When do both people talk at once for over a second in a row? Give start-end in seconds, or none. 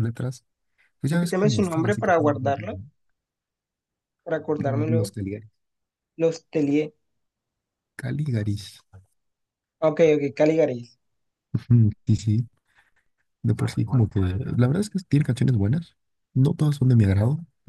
1.1-2.4